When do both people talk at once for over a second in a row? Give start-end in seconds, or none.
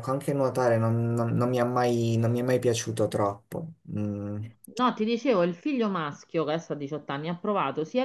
none